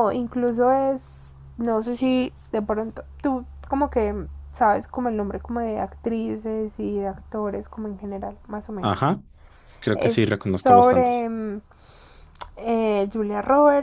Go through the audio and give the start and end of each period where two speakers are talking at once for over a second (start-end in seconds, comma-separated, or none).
9.9-11.3